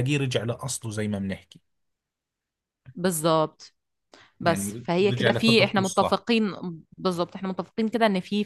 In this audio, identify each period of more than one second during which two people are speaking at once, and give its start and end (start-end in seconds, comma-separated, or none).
4.4-6.2